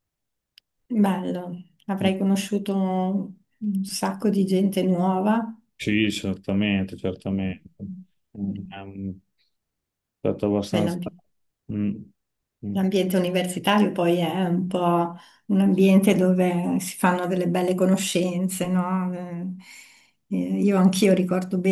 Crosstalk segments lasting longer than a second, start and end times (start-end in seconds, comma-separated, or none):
none